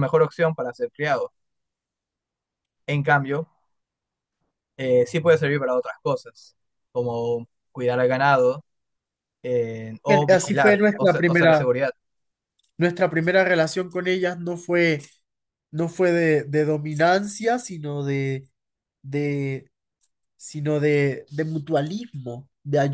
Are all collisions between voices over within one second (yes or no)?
no